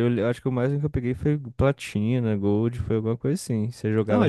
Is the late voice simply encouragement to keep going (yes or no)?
no